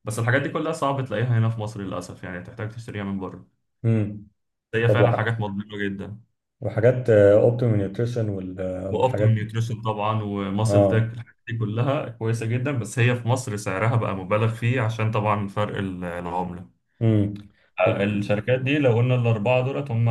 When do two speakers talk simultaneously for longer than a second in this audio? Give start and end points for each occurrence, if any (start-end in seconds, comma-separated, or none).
none